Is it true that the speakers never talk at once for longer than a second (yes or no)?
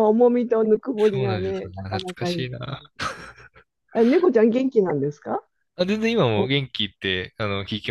no